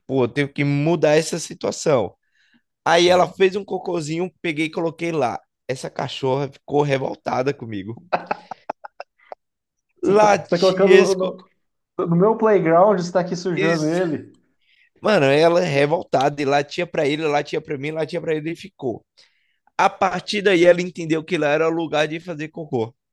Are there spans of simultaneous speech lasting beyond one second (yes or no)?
yes